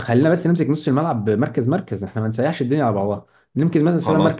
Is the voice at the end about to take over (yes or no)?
no